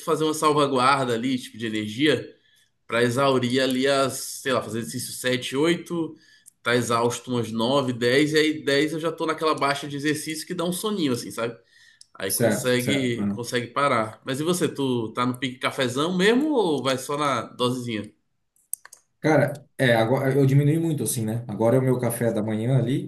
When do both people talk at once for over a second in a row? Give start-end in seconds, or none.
12.3-13.5